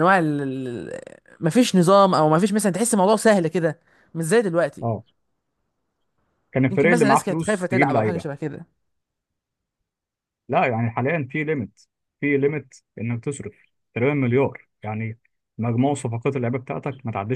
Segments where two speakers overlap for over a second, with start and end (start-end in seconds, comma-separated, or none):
6.7-8.2